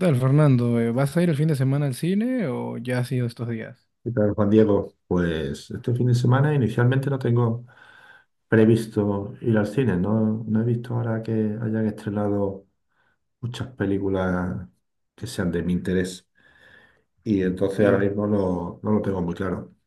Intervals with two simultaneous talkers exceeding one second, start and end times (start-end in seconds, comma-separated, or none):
none